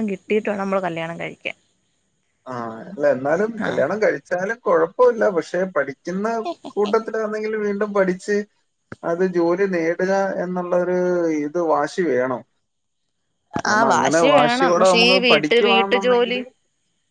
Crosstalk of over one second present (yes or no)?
yes